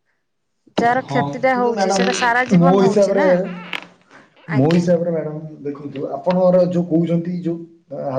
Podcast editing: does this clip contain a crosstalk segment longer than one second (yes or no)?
yes